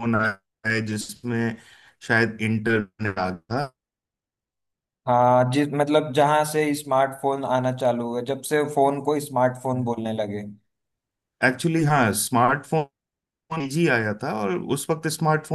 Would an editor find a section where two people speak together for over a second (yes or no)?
no